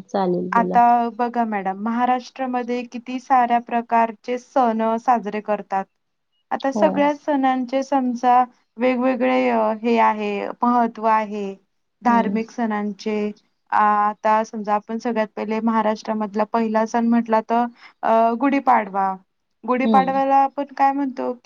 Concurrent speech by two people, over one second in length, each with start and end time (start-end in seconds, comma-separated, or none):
none